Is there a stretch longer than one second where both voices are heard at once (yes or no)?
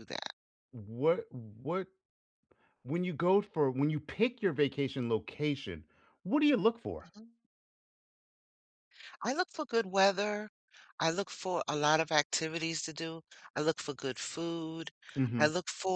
no